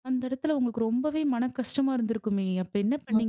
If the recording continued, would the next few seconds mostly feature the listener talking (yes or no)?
yes